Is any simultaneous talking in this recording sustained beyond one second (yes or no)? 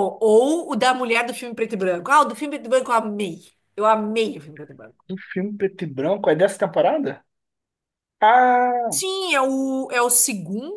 no